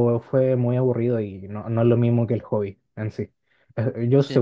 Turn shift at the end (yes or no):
no